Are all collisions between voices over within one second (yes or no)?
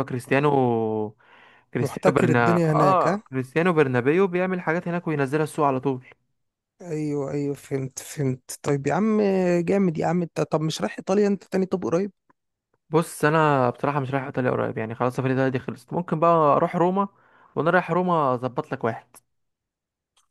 no